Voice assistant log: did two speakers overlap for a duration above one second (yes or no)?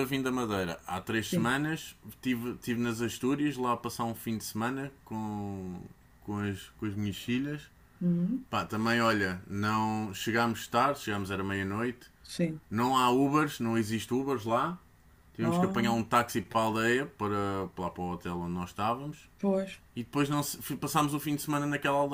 no